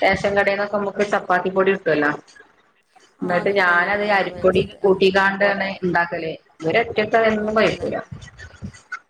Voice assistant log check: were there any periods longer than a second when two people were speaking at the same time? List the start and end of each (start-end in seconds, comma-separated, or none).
3.3-5.0